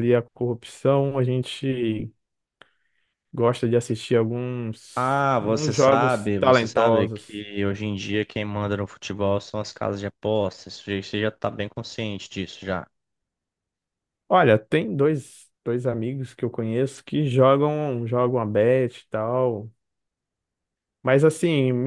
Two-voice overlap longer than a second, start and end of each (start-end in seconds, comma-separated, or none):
5.0-7.4